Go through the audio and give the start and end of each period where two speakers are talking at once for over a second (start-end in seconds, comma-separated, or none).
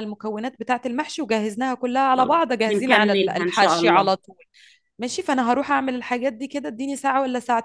2.2-4.1